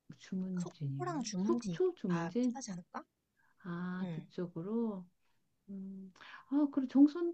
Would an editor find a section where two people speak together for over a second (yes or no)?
yes